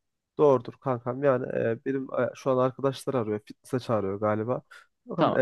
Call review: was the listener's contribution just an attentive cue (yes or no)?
yes